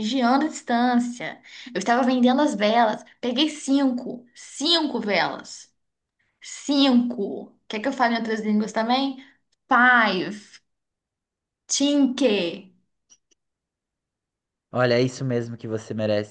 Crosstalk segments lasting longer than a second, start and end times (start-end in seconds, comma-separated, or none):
none